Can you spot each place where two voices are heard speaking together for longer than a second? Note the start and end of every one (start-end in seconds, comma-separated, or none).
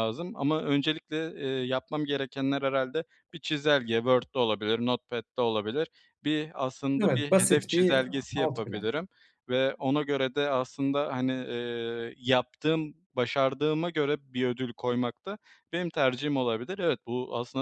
7.0-8.9